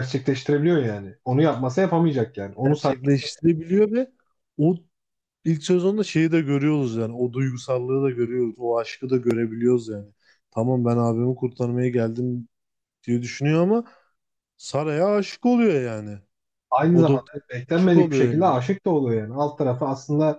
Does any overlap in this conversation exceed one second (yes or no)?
yes